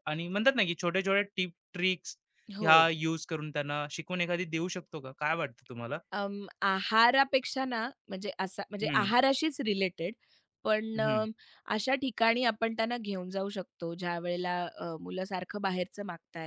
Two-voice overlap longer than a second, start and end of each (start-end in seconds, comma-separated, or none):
none